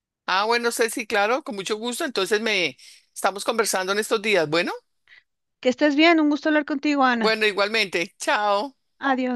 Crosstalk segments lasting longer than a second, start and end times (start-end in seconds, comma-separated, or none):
none